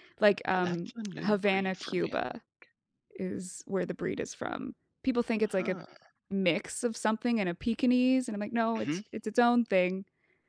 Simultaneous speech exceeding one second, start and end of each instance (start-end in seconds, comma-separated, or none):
0.5-2.4